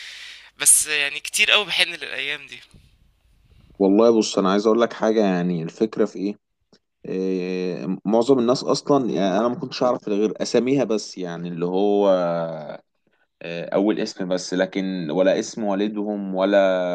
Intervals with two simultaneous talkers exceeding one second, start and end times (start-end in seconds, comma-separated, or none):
none